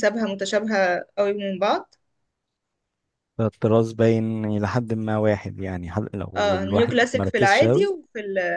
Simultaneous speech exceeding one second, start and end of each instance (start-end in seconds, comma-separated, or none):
6.4-7.9